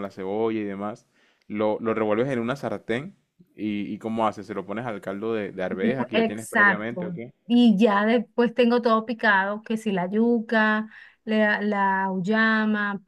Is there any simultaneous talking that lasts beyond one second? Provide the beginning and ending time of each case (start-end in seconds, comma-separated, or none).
5.7-7.3